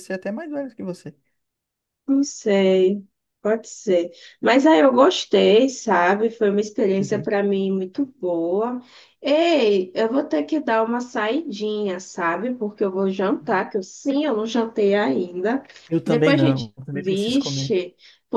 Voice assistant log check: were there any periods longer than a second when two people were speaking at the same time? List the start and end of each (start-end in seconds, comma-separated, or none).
16.0-17.7